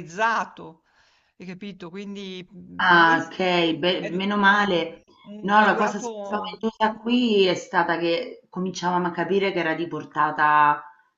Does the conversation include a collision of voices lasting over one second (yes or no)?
yes